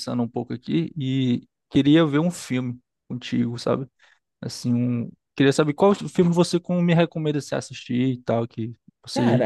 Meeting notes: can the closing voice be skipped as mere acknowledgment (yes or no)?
no